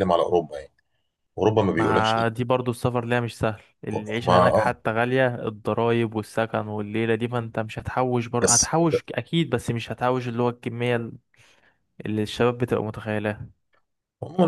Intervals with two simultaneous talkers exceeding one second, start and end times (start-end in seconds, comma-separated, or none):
none